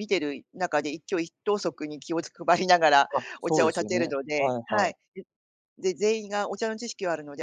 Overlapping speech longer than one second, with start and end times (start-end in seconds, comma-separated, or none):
3.2-4.9